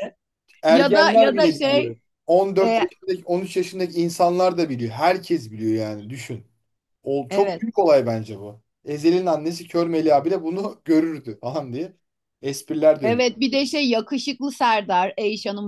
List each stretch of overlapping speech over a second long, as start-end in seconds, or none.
0.7-2.0